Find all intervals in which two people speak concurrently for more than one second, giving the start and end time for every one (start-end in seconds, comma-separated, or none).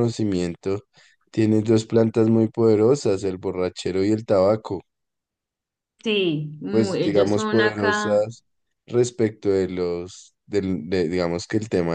6.7-8.3